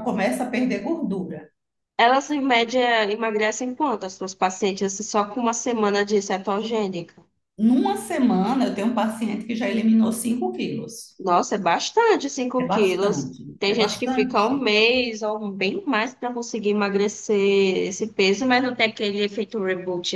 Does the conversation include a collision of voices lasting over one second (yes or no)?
yes